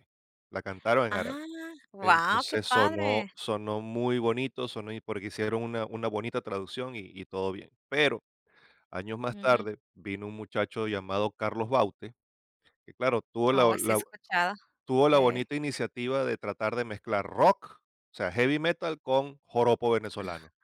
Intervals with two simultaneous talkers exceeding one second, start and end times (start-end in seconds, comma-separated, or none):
2.0-3.3